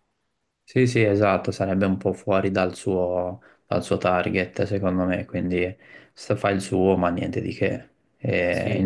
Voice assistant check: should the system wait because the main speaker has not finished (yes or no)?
yes